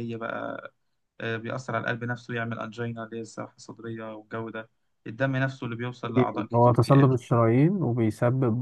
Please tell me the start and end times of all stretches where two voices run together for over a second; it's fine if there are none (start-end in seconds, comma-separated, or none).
none